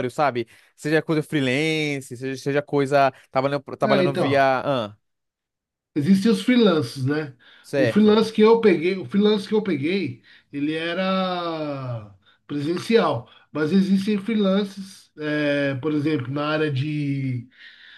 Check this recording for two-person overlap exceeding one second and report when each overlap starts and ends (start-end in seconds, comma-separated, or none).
none